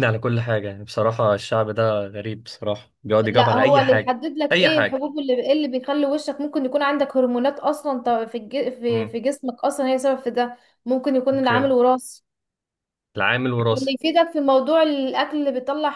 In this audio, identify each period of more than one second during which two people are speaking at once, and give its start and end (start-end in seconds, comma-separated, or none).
3.2-5.1